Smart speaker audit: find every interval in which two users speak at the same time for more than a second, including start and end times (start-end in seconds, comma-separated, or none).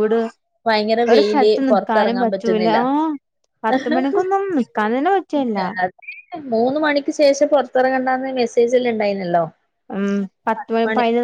1.1-2.8